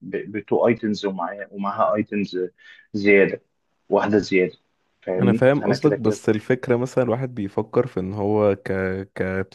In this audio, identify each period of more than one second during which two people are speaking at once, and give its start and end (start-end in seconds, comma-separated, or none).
5.2-6.4